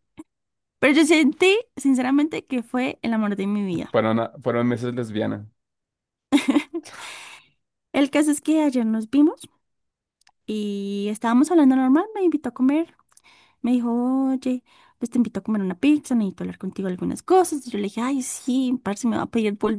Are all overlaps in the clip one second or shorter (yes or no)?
yes